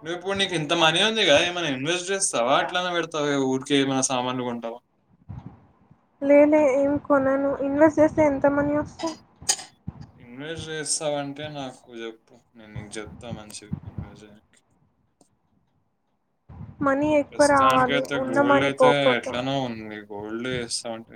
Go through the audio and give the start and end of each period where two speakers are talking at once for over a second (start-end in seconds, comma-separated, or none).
17.3-19.3